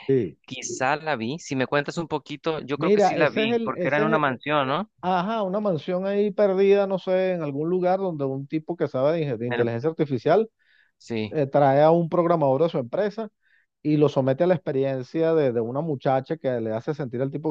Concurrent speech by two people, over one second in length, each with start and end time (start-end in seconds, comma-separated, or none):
2.8-4.2